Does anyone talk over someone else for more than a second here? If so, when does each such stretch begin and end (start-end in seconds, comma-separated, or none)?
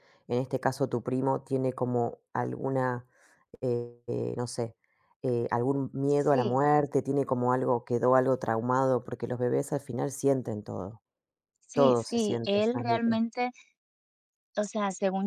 11.7-13.2